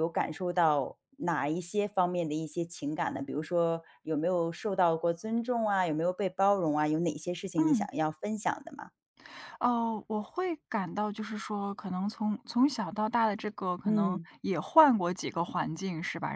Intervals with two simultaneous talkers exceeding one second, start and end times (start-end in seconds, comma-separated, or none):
none